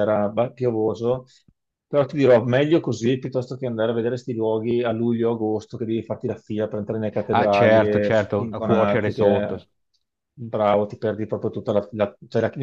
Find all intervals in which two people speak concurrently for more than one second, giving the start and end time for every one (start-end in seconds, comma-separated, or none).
7.3-9.6